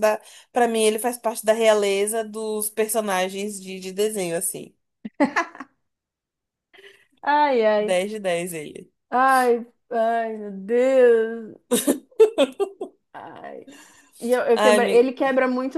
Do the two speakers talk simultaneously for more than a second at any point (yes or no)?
no